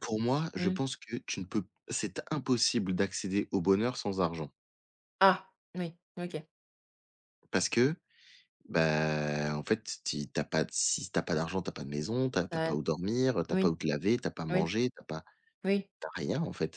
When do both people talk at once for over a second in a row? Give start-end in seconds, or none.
none